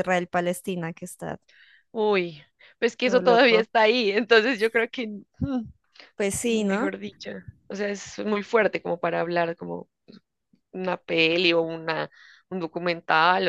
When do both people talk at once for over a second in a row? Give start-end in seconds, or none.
none